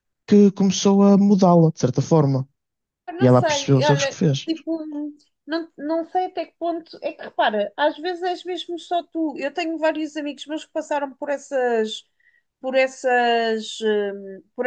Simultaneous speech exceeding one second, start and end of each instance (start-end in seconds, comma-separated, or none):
3.2-4.5